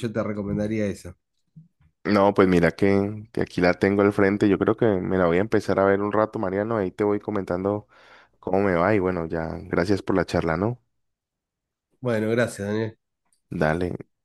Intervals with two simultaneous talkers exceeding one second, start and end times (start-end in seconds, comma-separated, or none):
none